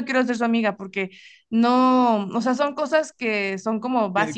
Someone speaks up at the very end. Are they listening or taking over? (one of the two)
taking over